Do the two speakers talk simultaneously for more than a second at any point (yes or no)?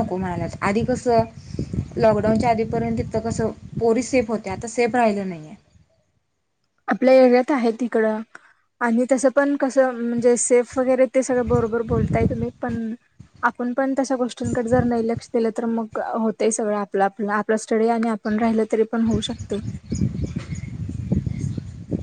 no